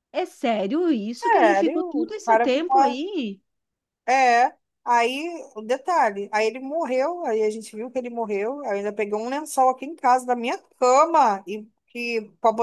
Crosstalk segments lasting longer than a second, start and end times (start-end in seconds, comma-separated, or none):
1.1-3.0